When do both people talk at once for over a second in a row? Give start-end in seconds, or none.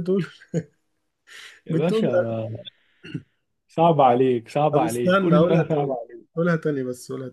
4.7-6.0